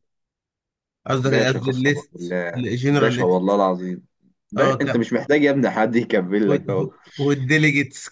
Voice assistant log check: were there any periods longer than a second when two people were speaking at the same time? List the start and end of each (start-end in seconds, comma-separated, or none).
1.2-3.6